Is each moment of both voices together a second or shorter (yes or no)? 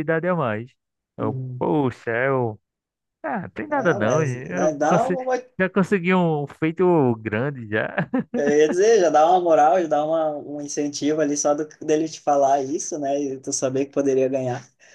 no